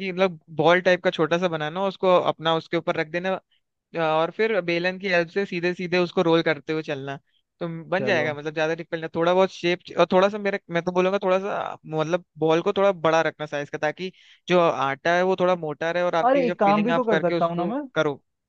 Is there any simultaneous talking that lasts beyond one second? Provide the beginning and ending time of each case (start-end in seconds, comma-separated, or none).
16.2-17.8